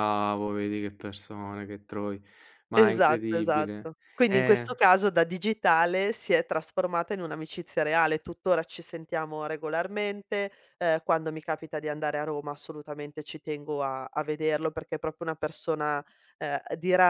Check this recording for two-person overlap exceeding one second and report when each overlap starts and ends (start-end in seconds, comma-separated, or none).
2.7-4.7